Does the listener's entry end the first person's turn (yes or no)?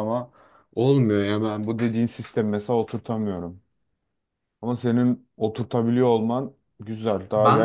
yes